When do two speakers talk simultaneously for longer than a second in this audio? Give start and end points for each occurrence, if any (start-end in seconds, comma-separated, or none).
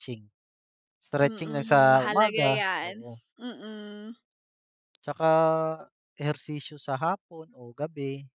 1.2-2.9